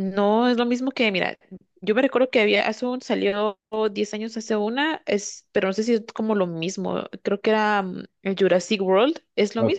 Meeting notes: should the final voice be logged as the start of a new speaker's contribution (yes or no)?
yes